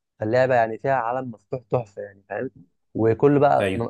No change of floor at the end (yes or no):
yes